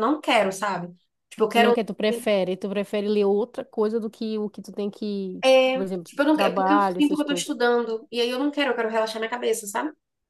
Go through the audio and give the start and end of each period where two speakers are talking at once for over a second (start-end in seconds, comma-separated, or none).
5.4-7.5